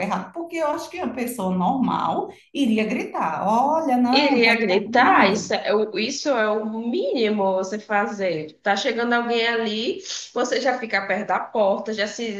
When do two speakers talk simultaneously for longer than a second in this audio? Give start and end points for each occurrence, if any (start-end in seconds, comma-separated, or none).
4.1-5.5